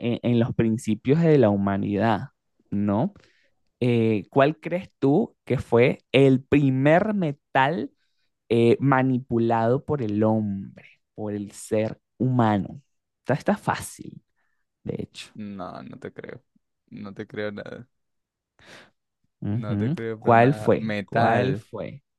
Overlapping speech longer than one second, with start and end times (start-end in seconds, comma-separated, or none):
19.5-21.6